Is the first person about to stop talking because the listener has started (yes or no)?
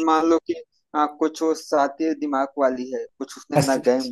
no